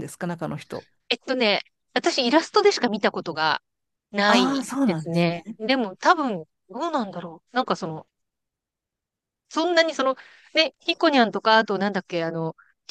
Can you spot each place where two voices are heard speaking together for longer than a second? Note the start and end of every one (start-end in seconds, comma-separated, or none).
4.3-5.6